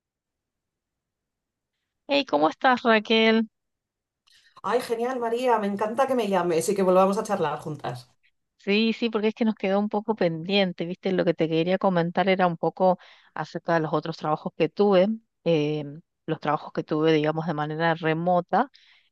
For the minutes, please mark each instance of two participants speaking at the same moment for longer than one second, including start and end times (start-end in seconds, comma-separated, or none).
none